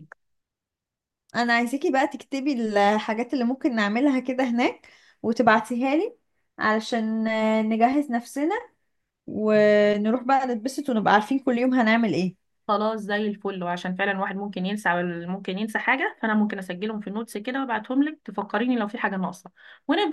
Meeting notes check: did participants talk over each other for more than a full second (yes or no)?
no